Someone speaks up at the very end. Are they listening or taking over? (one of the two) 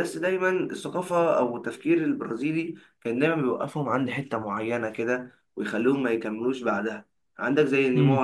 listening